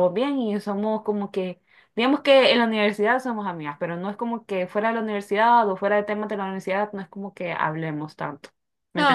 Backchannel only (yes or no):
no